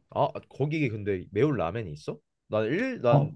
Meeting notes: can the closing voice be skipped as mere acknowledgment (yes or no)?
yes